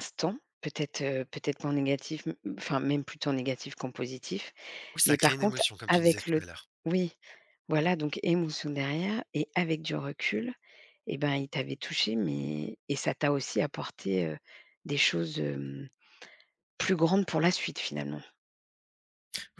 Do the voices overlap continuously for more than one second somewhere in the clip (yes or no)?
yes